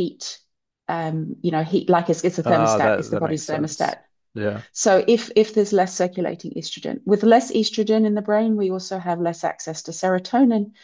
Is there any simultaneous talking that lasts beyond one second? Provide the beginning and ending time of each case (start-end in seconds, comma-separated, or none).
2.4-4.0